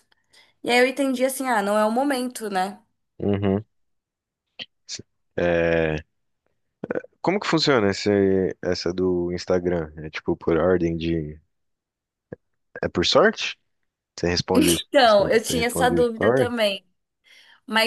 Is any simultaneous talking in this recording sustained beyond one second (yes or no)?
yes